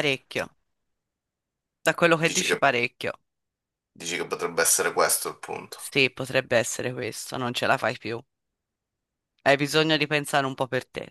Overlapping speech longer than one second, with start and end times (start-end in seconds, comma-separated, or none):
none